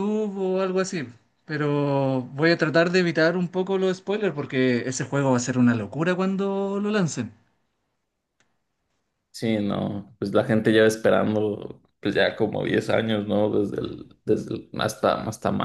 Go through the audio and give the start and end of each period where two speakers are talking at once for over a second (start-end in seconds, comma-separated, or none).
none